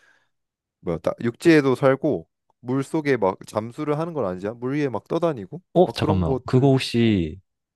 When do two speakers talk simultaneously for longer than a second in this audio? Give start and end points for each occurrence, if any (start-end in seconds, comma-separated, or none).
5.7-7.2